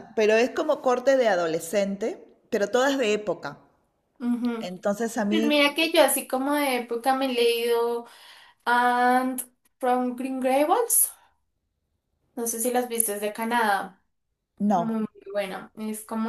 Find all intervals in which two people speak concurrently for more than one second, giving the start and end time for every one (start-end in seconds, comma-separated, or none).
none